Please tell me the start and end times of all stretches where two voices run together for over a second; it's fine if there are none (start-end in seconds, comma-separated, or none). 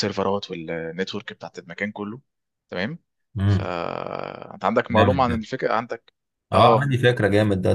none